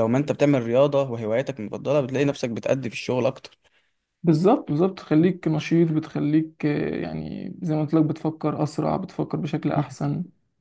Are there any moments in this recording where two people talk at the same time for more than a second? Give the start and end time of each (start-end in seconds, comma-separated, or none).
none